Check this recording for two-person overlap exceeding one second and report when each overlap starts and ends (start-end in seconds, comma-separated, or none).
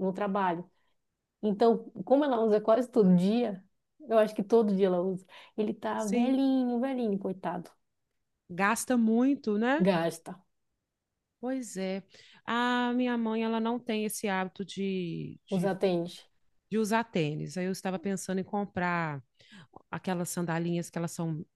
none